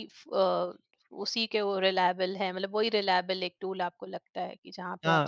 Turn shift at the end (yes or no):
yes